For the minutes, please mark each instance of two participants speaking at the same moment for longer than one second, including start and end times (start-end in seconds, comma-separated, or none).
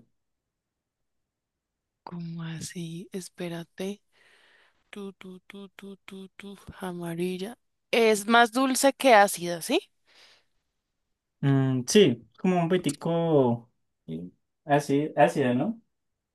none